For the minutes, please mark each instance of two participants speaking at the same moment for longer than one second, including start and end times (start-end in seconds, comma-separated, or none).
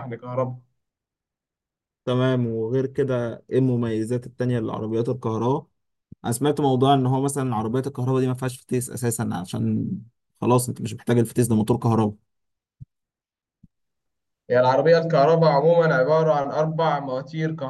none